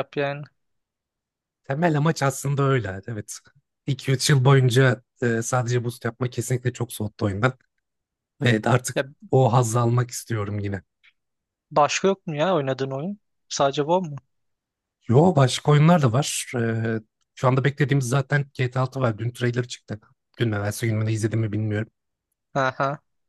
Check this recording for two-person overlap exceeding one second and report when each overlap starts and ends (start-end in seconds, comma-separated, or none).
none